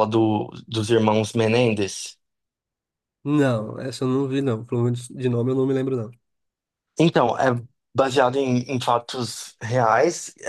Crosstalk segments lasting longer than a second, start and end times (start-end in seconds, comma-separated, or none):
none